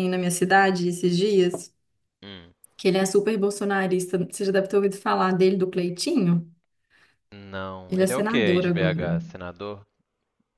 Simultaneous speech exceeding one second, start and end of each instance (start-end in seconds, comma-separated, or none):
7.9-9.1